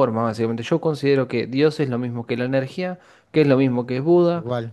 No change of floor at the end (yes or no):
yes